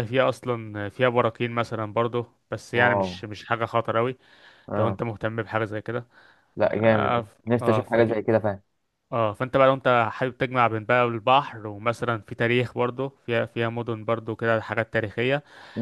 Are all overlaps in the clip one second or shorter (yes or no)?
no